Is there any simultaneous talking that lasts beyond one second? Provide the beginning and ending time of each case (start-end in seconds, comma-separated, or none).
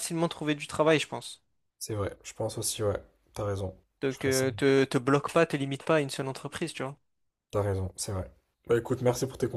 none